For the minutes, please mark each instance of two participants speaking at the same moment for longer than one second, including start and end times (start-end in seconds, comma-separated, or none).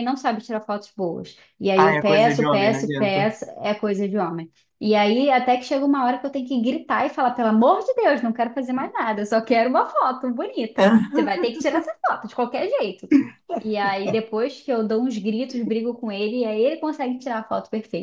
1.8-3.3